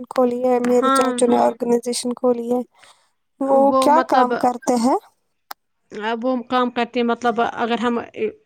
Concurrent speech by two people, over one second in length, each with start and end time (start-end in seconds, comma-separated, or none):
none